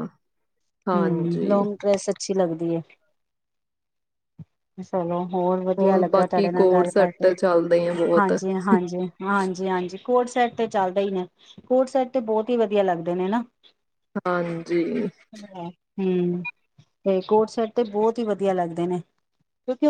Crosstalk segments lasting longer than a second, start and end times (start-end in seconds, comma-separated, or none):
5.8-7.3